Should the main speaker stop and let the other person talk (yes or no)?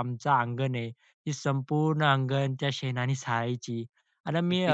no